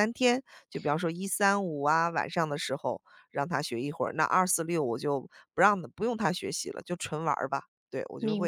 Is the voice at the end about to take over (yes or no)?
yes